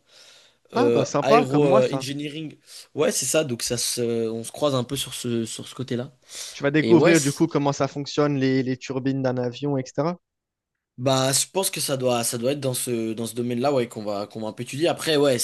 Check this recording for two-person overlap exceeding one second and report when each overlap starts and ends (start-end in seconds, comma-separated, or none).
0.7-2.1